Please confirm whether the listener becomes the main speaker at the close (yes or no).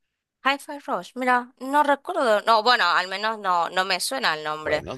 yes